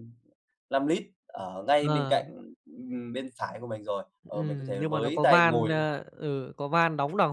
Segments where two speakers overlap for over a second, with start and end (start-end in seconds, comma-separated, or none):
4.3-5.8